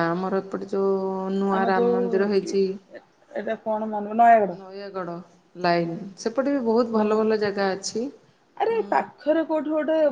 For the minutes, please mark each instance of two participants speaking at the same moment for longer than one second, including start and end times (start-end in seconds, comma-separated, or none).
none